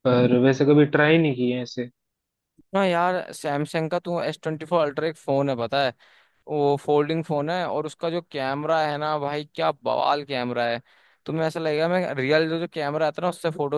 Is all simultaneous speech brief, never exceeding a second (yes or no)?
yes